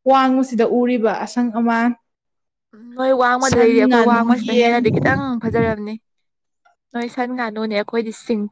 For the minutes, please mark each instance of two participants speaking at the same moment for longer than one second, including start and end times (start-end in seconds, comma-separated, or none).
3.4-5.4